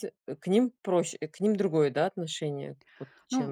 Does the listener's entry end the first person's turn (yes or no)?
yes